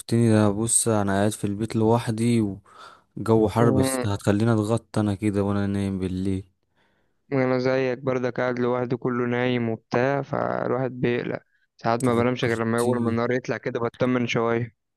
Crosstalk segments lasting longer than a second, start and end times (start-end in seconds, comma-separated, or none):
11.9-13.2